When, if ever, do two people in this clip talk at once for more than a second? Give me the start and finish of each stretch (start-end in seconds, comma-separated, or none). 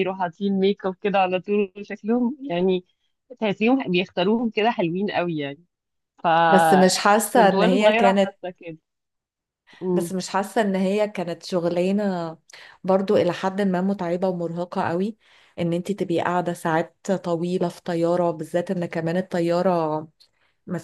6.5-8.3